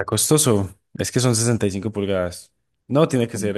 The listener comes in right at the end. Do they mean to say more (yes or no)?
no